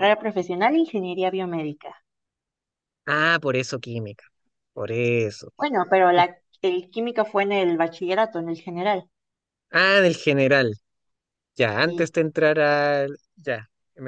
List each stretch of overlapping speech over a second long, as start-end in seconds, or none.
none